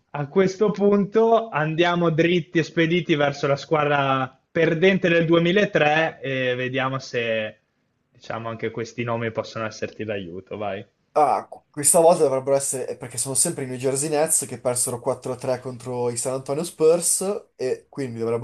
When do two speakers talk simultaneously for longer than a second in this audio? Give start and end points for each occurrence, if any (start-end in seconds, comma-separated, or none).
none